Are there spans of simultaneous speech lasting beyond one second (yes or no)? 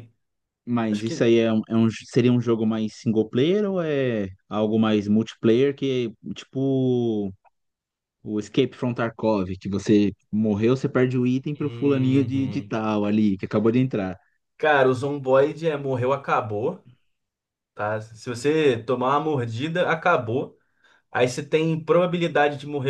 yes